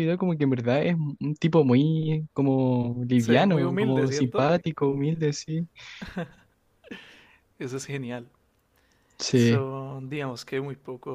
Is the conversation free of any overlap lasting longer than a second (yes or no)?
no